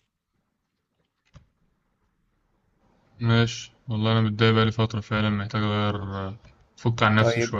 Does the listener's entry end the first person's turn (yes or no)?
yes